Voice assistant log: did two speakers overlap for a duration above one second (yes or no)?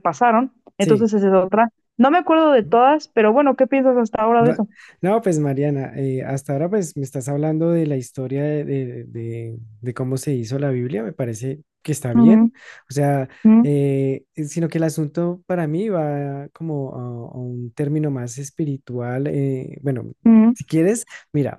no